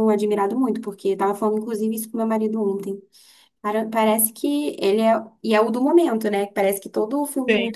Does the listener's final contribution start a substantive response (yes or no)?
no